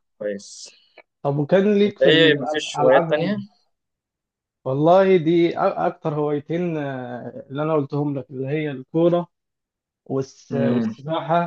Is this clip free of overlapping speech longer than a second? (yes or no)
no